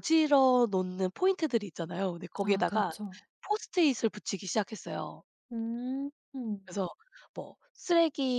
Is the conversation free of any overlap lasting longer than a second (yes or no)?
yes